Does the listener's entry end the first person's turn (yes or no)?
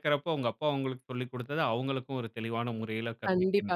yes